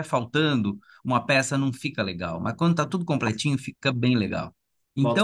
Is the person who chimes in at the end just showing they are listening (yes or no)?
yes